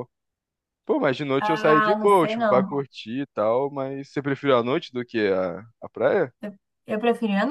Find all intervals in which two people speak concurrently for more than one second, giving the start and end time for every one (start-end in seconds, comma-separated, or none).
1.4-2.8